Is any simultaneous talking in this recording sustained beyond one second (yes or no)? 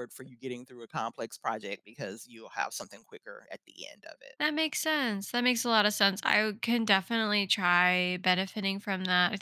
no